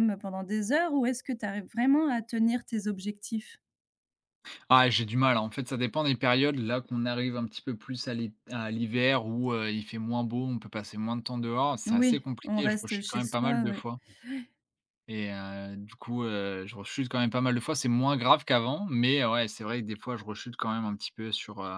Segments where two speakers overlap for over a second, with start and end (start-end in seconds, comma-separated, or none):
11.9-13.8